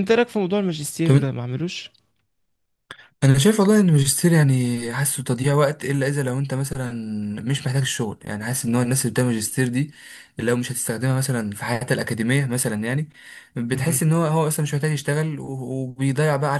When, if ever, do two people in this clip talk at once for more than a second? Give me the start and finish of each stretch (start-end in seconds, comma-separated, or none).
none